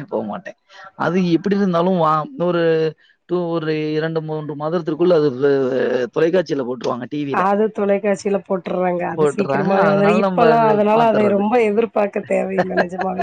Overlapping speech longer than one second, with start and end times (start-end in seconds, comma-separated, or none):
9.2-11.4